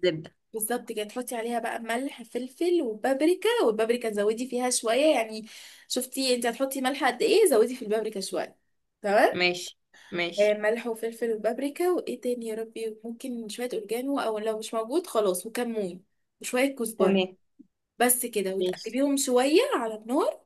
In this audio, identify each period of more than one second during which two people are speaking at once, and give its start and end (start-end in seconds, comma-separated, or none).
none